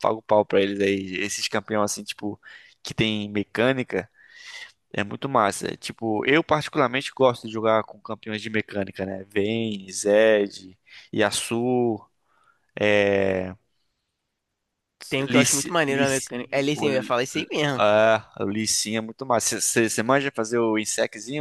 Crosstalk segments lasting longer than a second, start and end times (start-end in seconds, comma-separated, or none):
15.3-17.1